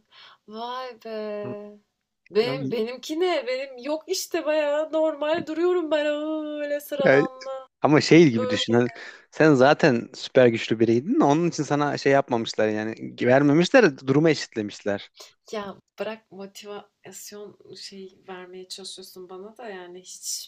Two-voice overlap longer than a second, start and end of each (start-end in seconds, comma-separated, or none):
none